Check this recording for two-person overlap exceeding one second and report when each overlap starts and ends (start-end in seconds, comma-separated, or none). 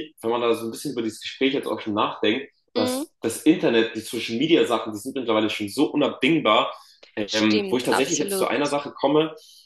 7.3-8.6